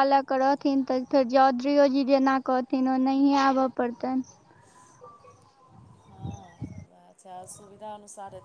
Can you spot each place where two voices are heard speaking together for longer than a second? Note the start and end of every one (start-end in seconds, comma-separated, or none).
0.6-3.7